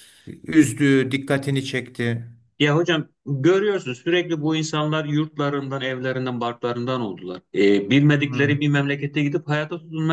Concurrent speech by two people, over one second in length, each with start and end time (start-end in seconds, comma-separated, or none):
none